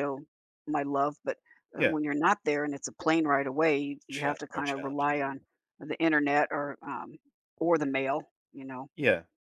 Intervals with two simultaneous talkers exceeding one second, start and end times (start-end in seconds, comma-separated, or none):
4.1-5.4